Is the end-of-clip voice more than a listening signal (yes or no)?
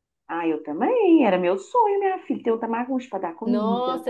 yes